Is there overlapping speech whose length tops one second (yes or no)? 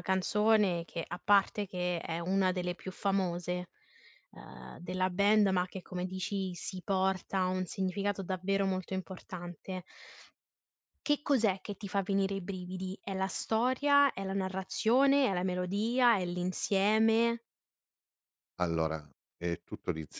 no